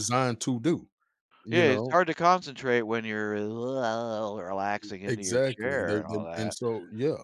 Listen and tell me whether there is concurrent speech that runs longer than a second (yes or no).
yes